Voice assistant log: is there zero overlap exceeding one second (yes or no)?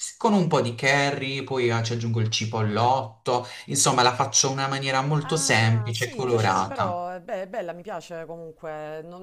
no